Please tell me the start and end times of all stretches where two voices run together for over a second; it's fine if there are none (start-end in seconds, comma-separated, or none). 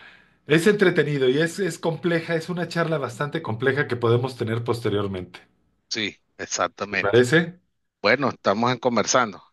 none